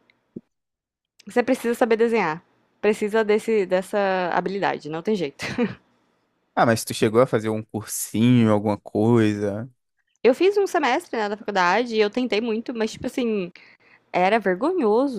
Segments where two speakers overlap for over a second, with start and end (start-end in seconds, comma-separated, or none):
none